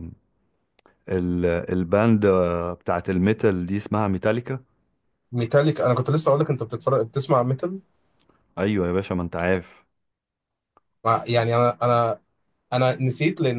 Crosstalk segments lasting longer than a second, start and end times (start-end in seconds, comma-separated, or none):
none